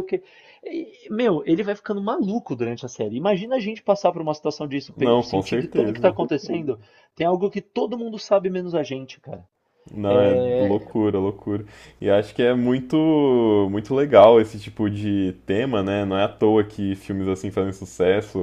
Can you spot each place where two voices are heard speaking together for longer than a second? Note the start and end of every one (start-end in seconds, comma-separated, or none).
5.0-6.2